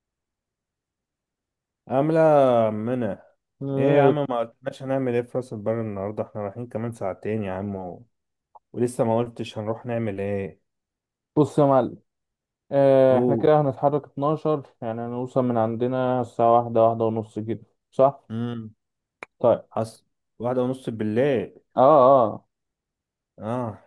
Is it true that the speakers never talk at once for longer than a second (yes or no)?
yes